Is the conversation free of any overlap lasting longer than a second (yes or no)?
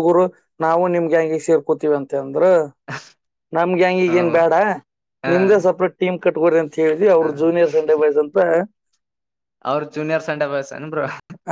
yes